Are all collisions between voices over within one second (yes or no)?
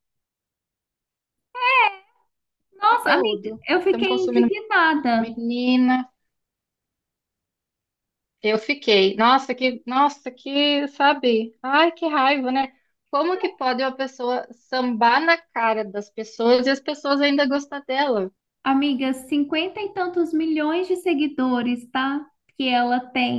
no